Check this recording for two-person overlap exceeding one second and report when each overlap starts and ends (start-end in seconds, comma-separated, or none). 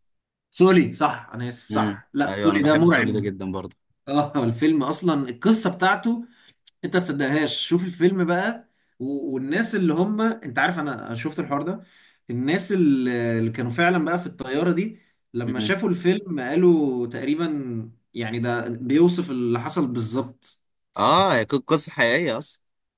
1.7-3.3